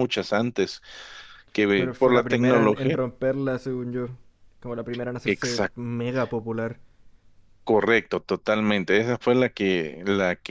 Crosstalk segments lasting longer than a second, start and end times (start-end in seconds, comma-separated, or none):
1.7-3.0